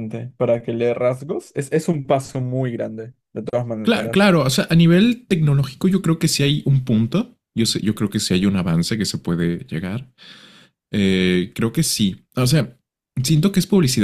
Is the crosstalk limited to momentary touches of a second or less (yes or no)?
yes